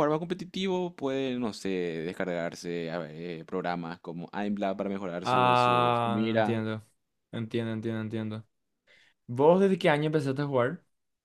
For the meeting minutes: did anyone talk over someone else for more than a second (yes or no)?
yes